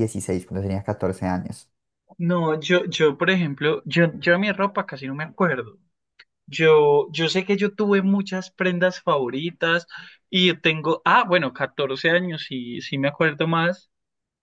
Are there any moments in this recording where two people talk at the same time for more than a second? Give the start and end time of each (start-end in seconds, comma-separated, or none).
none